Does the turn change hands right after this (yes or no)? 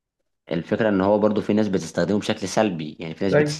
no